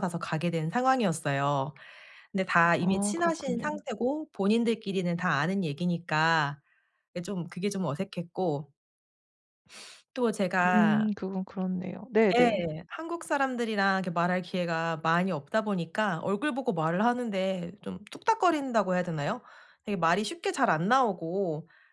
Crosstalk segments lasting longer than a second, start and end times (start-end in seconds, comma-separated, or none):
2.6-3.8